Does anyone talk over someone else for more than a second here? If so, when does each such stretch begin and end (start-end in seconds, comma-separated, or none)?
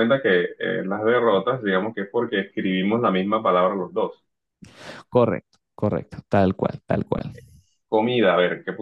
none